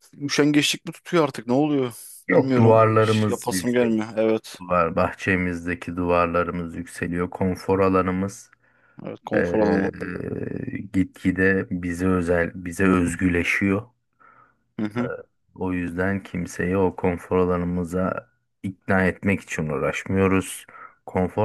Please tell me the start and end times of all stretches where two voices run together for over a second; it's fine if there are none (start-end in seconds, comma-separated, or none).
2.3-4.0